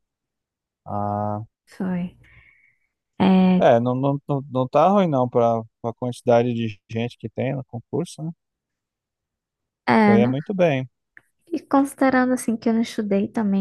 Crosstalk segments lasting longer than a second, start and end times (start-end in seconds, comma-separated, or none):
none